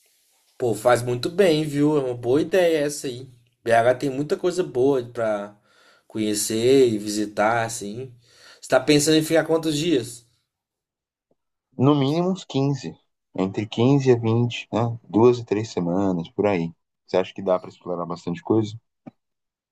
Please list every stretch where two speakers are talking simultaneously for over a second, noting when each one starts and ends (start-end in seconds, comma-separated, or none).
none